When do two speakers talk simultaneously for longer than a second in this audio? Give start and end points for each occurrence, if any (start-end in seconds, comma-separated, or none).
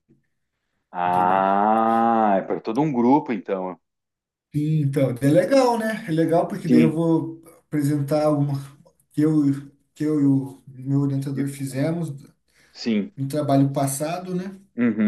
none